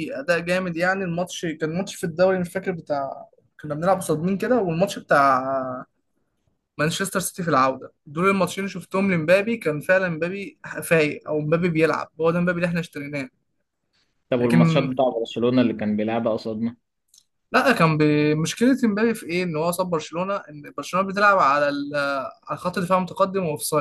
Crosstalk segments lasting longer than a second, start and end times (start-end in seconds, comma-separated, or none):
none